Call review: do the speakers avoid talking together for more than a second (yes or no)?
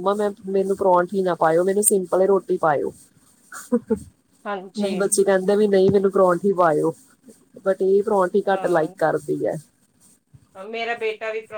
yes